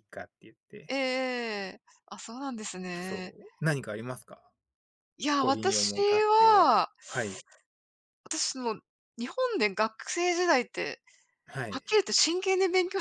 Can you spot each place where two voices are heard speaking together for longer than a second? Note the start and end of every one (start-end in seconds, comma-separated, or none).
5.4-6.7